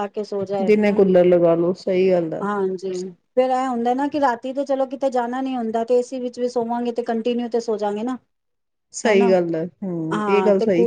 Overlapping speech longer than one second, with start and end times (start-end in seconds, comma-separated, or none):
none